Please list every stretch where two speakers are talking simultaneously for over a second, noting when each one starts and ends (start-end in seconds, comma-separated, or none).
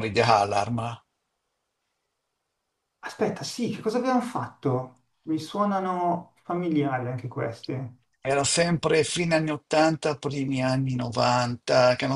none